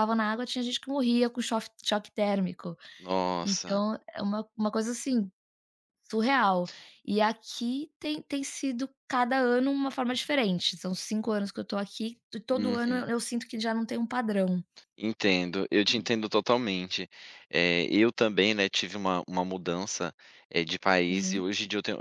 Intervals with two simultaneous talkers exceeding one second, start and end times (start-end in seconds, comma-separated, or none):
none